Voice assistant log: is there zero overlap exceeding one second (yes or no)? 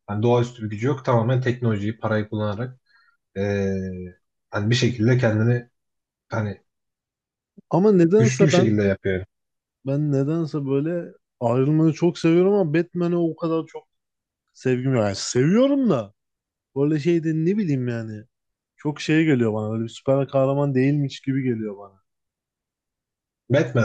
yes